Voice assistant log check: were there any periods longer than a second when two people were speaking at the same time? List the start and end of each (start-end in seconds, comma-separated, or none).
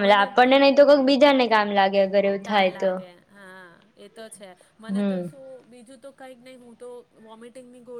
none